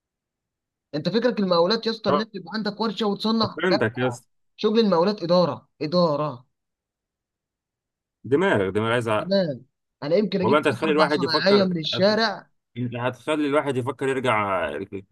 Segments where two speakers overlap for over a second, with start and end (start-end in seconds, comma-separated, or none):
10.4-12.2